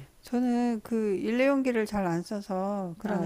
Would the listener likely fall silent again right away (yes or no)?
yes